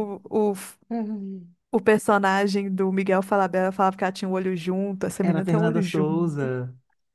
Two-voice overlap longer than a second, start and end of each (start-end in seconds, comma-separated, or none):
5.2-6.5